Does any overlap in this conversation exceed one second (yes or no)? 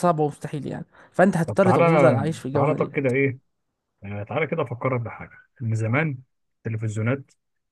yes